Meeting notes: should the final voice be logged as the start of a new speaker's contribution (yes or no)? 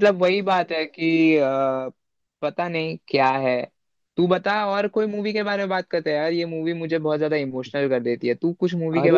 yes